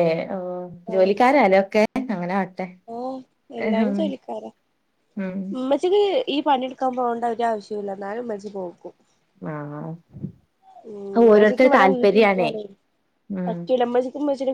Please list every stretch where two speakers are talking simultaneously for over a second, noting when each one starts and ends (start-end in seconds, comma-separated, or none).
11.2-12.5